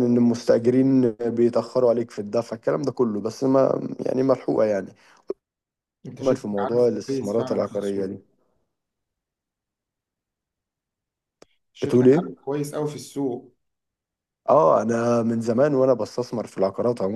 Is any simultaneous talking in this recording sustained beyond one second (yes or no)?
yes